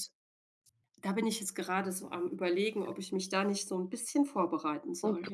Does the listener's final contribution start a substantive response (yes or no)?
yes